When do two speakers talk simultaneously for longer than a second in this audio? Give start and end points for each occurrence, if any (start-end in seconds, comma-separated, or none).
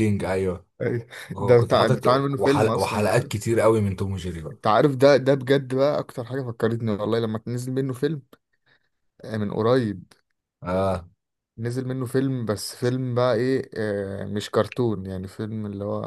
1.3-3.1